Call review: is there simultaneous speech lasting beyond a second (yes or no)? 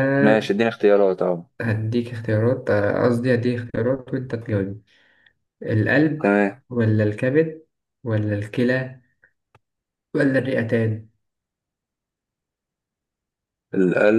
no